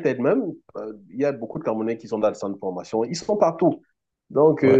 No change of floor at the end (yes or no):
yes